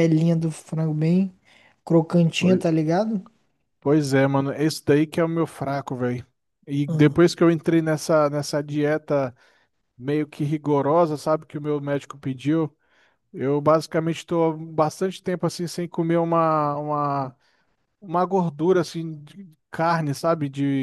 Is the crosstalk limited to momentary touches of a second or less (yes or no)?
yes